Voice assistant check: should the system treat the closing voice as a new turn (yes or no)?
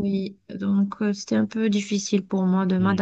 yes